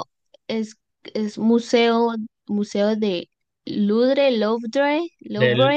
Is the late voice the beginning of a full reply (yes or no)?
yes